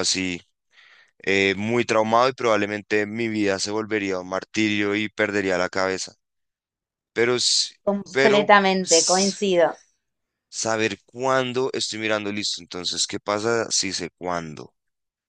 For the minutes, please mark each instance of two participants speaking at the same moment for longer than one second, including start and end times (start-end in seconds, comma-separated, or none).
8.1-9.5